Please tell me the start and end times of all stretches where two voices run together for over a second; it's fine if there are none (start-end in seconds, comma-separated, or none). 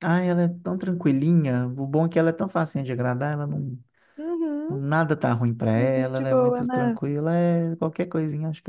5.8-7.0